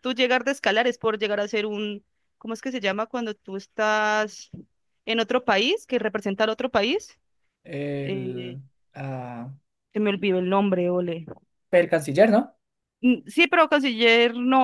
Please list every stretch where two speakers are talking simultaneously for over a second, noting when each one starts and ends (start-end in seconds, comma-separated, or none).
none